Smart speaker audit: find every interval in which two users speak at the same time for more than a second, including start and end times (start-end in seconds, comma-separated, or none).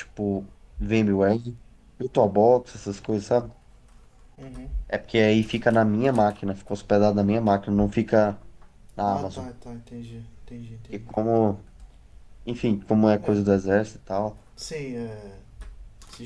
none